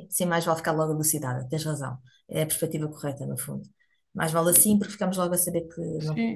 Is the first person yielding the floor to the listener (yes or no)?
yes